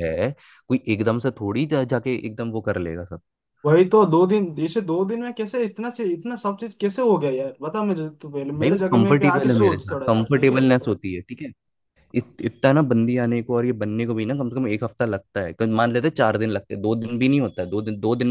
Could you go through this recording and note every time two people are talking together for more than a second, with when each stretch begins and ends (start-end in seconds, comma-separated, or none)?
8.6-10.6